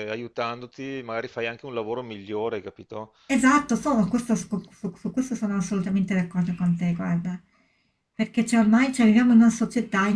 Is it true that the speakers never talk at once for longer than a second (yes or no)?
yes